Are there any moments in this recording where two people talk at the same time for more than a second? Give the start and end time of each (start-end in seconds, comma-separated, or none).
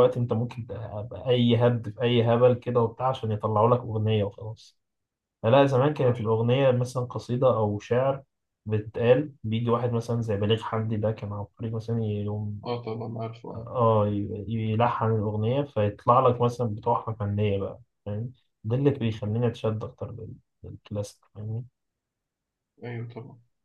none